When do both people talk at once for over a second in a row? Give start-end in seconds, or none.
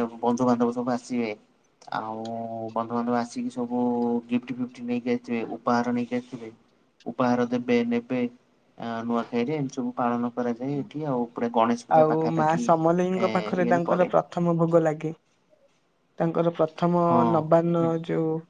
12.0-14.1